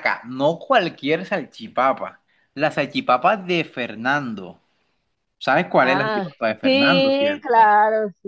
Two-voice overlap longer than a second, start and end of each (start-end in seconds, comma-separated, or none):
5.8-7.7